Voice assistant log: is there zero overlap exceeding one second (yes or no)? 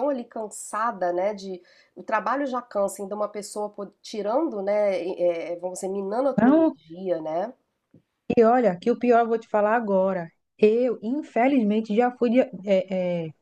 yes